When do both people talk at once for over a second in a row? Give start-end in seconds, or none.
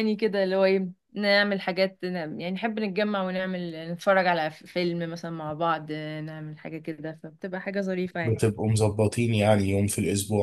none